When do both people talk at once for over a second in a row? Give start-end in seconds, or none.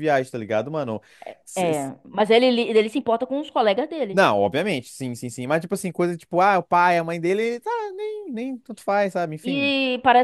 none